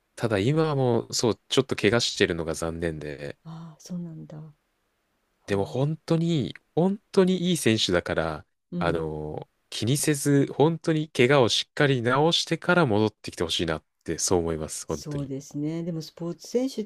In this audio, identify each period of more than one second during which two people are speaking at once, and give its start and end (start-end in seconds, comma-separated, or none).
none